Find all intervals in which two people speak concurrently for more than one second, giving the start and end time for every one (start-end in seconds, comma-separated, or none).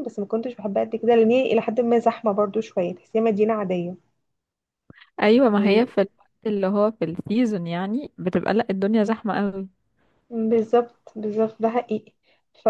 none